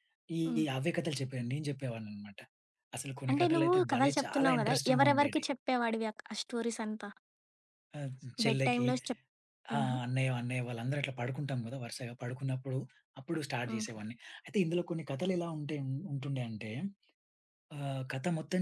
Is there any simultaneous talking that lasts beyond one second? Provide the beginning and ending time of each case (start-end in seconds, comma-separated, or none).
3.3-5.5